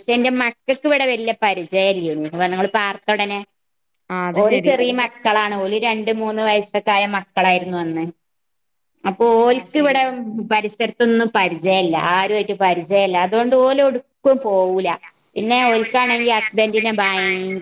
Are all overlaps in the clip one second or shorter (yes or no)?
no